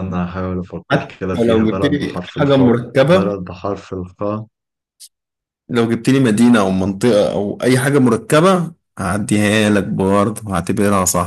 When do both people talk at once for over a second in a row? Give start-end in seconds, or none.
0.9-3.4